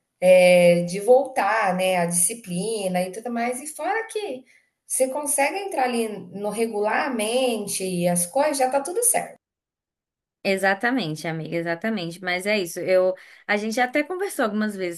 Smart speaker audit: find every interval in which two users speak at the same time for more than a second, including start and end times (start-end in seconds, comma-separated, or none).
none